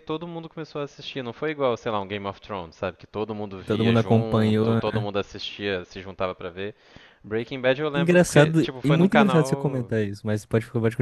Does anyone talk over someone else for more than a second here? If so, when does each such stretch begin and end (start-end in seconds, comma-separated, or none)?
3.6-5.0, 7.9-9.9